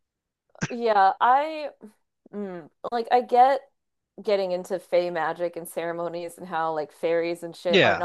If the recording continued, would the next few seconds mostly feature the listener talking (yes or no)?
no